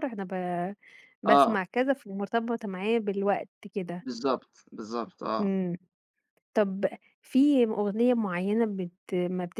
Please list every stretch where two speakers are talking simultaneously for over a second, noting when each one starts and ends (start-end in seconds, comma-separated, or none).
none